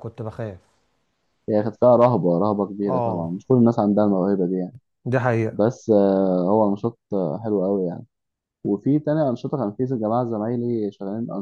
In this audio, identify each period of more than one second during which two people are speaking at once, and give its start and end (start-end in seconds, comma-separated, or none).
none